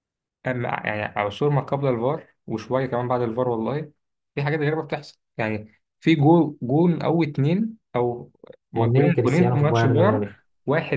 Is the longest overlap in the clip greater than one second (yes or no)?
yes